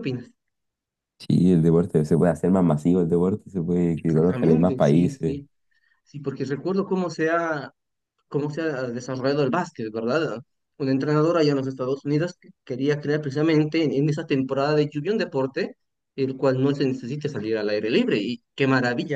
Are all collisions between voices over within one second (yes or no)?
no